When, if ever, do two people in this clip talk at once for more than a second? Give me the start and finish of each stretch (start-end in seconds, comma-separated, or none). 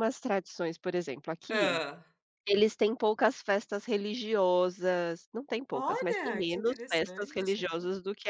5.7-7.7